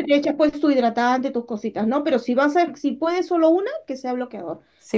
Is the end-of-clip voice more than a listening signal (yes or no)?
yes